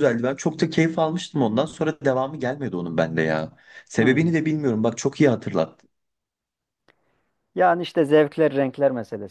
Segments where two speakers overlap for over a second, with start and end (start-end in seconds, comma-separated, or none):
none